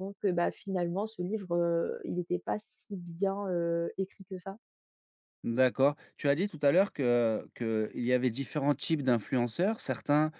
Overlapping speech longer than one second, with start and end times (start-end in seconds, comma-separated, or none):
none